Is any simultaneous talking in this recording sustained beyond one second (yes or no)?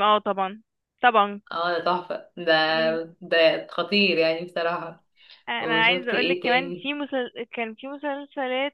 yes